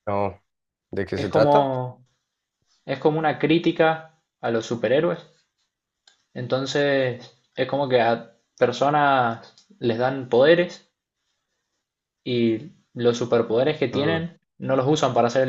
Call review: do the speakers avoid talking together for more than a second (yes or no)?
yes